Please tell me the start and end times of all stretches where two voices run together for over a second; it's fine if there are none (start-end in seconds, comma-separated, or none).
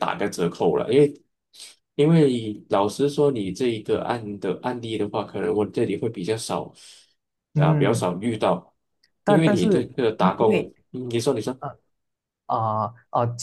9.2-10.7